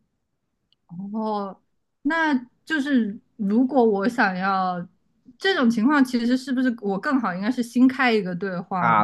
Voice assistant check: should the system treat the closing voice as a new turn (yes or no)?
yes